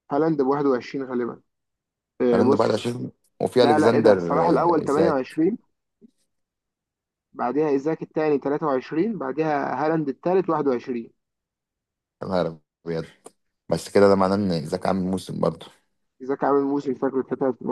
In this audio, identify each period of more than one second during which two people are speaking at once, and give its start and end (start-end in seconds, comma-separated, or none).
3.6-5.4